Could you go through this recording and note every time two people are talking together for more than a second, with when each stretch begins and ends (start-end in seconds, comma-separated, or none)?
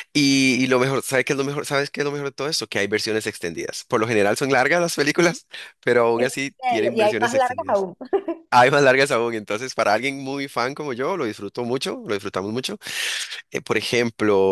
6.2-7.9